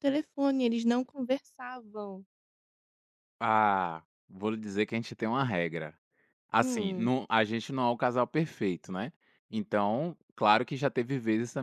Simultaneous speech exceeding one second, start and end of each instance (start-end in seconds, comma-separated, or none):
none